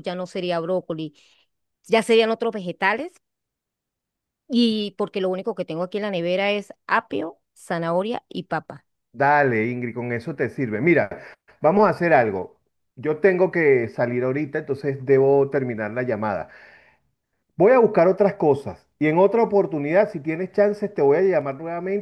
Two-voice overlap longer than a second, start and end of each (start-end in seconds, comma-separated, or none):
none